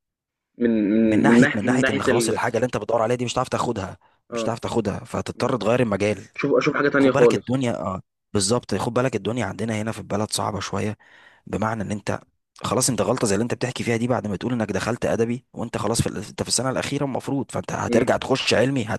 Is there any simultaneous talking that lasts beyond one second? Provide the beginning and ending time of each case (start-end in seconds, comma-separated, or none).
1.1-2.4